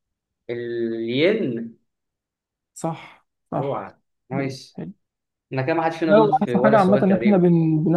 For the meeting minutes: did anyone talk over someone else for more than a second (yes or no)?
yes